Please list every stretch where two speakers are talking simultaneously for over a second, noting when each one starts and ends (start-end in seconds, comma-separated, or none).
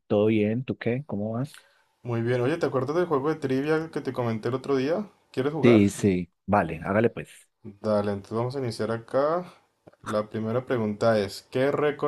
none